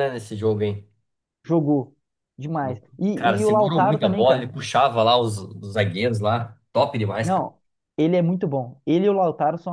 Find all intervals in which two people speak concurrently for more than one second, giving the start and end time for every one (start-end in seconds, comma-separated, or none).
3.1-4.5